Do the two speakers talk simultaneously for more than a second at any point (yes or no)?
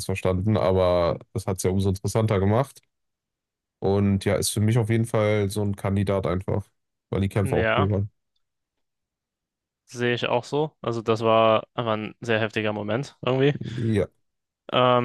no